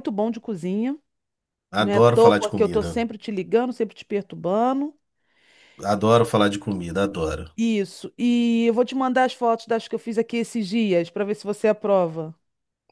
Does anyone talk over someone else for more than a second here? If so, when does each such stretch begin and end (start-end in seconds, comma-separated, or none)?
1.8-3.0